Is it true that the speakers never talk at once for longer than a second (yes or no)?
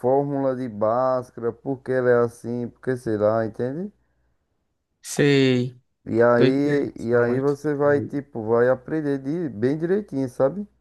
no